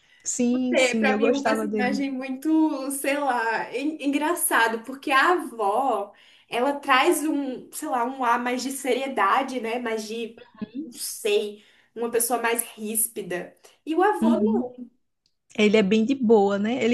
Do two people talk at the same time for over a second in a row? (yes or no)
yes